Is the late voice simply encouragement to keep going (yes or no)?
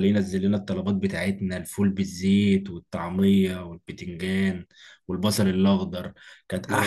yes